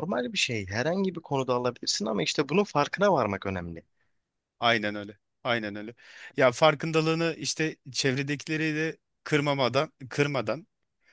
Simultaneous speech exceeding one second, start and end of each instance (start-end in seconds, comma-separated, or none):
none